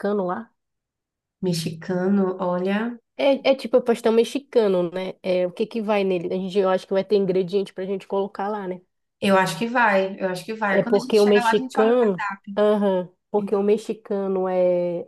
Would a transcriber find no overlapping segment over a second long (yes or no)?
no